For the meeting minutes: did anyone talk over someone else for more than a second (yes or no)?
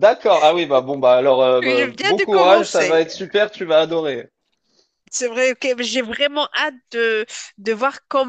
yes